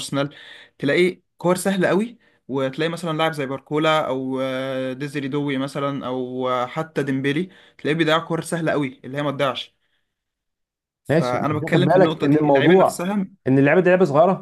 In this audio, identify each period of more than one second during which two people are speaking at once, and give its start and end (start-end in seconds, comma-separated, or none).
11.1-13.1